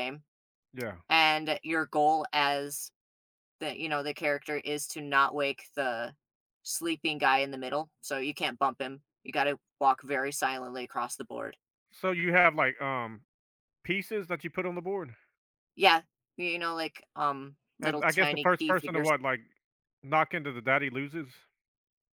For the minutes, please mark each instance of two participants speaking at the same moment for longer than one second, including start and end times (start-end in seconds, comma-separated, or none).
17.8-19.1